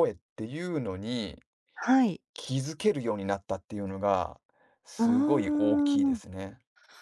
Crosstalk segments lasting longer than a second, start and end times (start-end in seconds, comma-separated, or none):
5.0-6.2